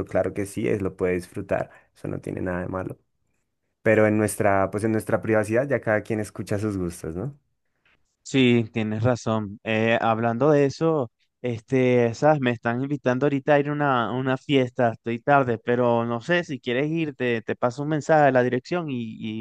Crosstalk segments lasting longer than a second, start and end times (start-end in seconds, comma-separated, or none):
none